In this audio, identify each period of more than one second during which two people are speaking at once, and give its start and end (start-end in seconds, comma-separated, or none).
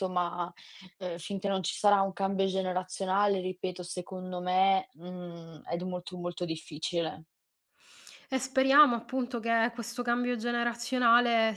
none